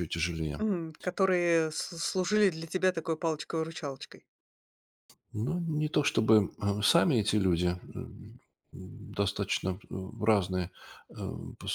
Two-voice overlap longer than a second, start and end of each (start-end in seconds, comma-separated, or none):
none